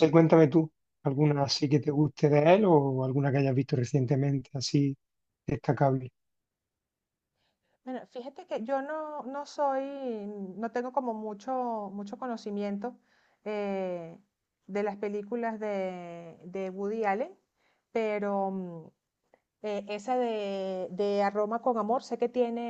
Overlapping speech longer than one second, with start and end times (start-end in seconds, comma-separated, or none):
none